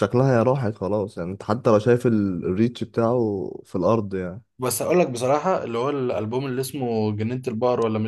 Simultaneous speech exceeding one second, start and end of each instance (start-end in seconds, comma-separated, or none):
none